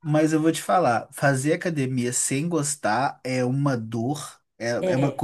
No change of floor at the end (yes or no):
yes